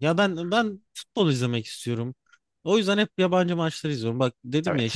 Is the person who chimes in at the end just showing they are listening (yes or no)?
yes